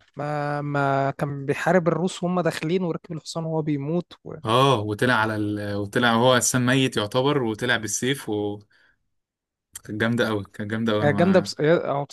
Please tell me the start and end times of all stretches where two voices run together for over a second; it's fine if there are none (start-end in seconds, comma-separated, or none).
none